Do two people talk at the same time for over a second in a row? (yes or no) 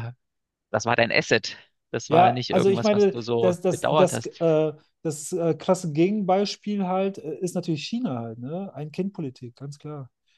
yes